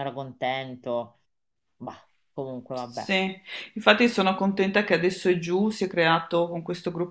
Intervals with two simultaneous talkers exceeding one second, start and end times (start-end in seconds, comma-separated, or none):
none